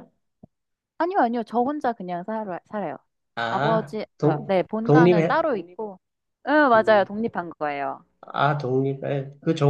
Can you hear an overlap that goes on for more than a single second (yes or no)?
yes